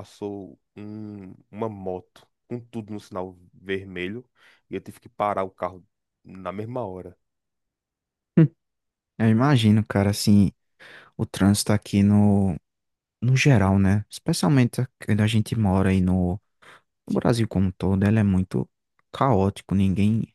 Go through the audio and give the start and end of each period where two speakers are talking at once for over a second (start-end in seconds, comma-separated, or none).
none